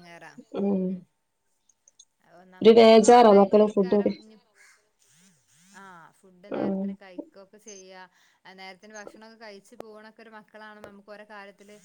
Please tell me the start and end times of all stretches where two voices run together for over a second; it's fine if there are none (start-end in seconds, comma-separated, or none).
2.6-4.1